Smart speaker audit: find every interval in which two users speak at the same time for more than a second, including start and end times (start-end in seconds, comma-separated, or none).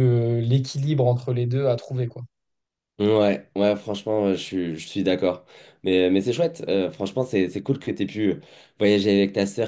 none